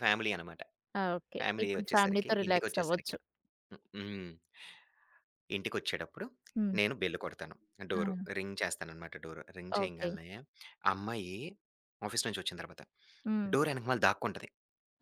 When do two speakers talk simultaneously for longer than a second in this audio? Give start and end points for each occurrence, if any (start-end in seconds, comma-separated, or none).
1.4-3.1